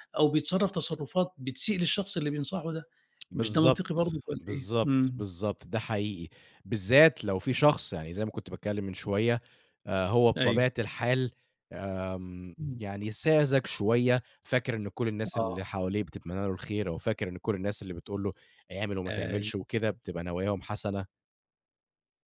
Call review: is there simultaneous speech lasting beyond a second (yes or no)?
yes